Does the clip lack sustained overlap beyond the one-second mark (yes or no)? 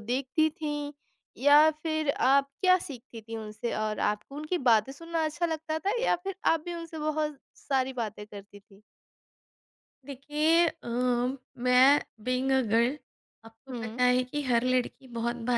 yes